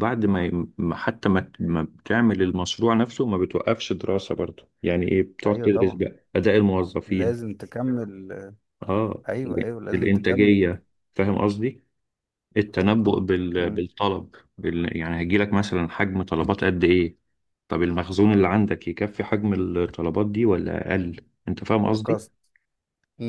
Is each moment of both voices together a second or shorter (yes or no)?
no